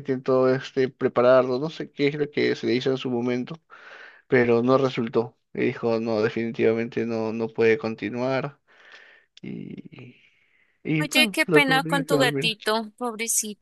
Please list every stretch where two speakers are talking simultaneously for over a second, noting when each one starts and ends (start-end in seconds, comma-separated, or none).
11.0-12.6